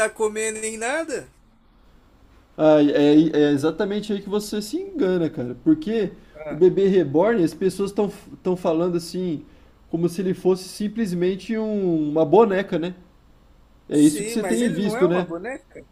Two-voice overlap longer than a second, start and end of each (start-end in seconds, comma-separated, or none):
13.9-15.3